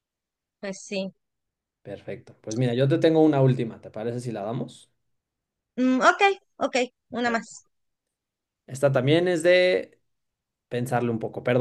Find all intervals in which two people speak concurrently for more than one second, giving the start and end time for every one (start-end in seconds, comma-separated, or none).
none